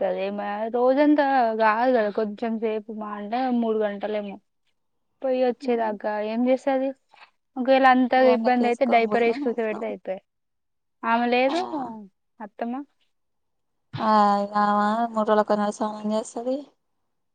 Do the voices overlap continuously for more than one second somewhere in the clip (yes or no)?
yes